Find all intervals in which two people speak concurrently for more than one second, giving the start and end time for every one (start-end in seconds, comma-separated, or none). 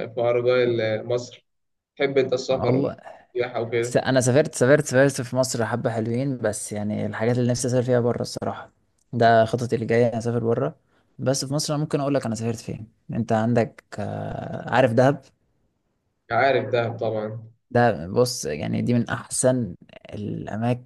none